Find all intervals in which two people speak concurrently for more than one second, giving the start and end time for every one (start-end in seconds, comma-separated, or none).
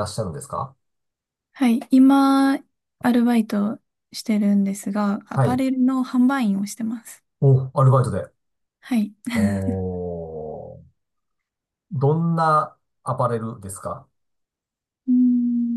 none